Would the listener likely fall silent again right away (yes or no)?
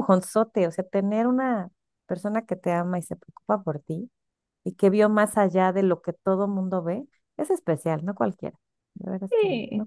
no